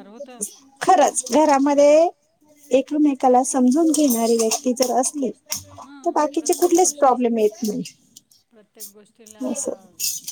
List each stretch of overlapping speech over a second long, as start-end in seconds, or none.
5.8-7.2